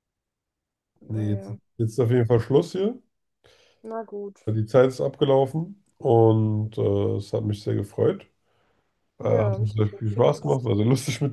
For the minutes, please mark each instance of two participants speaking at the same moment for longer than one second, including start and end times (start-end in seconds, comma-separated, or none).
9.2-10.7